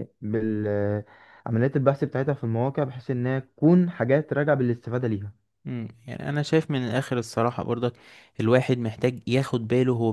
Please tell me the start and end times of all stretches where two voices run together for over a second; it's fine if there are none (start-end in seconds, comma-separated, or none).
none